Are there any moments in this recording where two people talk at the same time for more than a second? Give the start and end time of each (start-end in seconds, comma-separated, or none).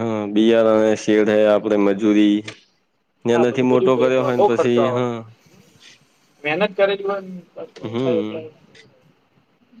3.3-5.0